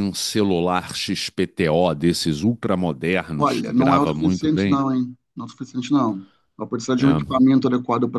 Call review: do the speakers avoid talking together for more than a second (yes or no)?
no